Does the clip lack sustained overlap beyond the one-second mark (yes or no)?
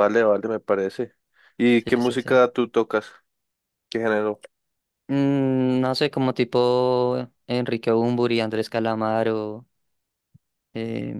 yes